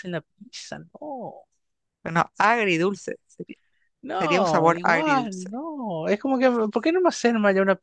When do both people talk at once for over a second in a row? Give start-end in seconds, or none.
4.1-5.5